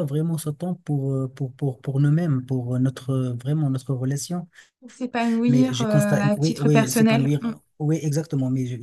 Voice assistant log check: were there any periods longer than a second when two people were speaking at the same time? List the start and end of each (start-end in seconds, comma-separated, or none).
5.5-7.3